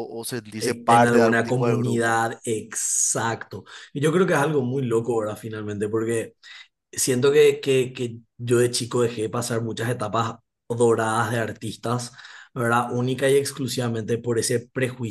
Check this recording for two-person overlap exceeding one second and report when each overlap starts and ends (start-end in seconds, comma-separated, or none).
0.6-2.2